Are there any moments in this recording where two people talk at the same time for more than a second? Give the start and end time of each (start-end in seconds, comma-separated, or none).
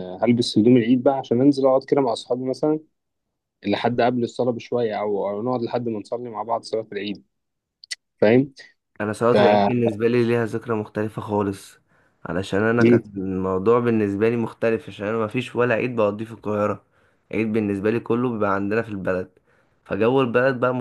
none